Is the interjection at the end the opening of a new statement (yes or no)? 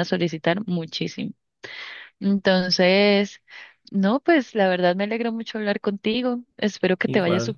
no